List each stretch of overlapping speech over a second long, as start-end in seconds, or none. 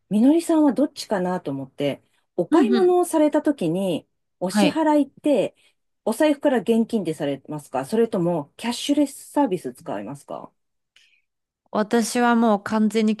none